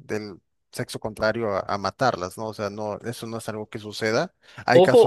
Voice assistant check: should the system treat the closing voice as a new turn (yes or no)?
yes